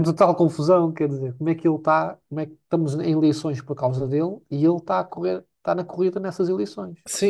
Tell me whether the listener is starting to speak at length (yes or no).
yes